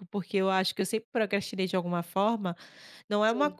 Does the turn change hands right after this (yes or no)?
no